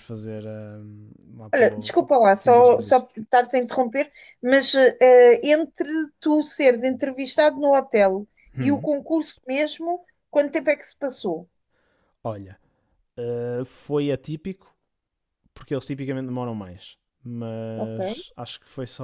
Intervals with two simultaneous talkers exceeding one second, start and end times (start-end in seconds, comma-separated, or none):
1.5-3.0